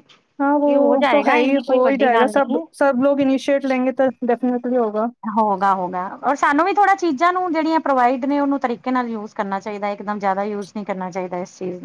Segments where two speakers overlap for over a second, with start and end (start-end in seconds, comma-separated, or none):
0.6-2.6